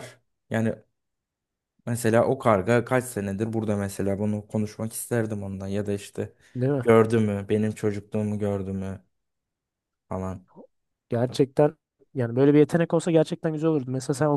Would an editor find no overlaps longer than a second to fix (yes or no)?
yes